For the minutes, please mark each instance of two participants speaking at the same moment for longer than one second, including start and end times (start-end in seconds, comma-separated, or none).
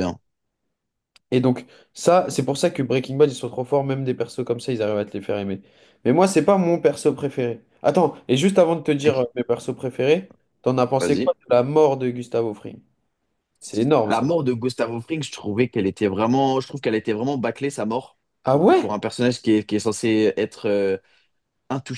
none